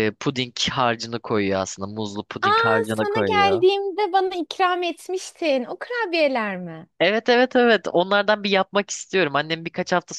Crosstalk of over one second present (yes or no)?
yes